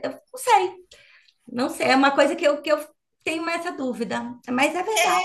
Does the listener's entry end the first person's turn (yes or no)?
yes